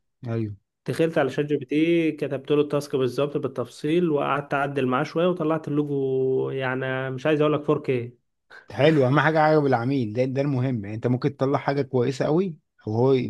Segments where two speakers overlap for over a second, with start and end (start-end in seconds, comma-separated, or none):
none